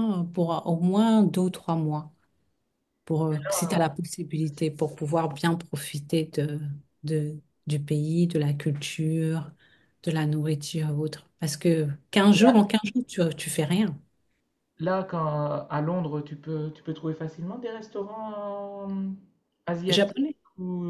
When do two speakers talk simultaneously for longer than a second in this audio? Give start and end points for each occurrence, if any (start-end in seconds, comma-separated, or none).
none